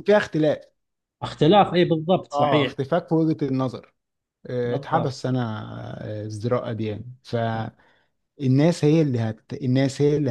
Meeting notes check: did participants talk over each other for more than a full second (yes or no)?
no